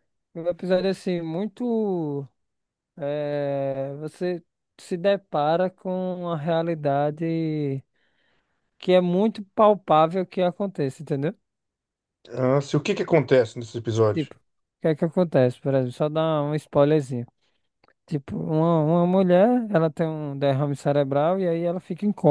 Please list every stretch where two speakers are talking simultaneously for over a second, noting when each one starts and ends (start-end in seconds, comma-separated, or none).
none